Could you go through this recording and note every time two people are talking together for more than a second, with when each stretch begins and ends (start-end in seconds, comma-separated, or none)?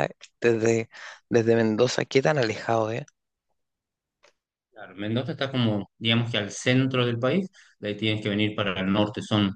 none